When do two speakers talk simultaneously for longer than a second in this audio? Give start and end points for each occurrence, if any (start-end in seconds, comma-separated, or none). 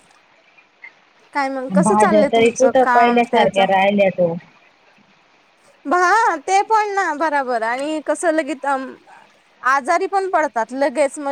1.9-3.6